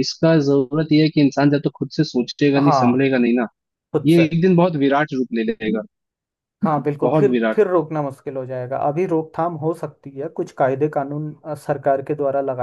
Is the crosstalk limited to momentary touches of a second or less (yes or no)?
yes